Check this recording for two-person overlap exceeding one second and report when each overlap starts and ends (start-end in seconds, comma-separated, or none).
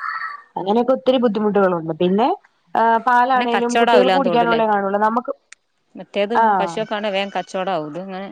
3.3-4.6